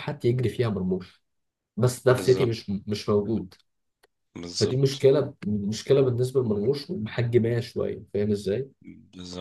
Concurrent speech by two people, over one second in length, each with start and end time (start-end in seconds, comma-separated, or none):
none